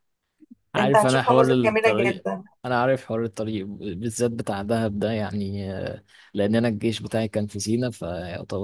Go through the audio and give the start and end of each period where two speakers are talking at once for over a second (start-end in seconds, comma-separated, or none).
0.8-2.2